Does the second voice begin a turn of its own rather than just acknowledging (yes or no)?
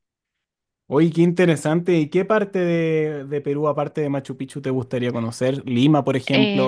yes